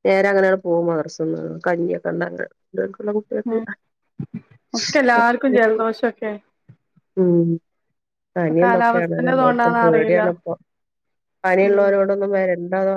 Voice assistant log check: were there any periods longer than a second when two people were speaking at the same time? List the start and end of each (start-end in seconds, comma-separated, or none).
8.6-10.2